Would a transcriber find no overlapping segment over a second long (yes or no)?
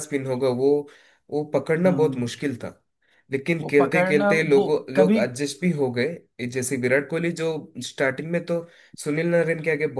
no